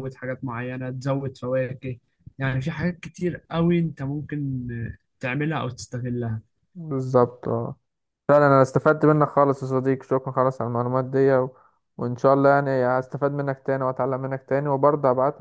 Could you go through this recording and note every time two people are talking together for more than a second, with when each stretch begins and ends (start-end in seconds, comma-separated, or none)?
none